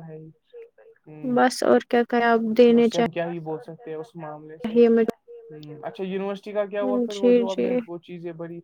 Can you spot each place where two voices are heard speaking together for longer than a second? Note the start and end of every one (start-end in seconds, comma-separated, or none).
none